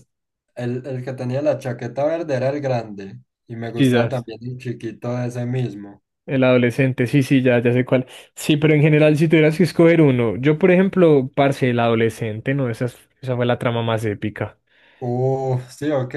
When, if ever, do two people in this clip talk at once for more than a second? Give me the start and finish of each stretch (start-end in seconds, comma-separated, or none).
none